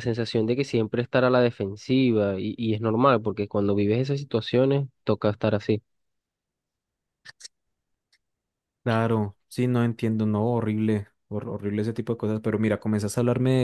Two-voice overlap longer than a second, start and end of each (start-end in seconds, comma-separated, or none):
none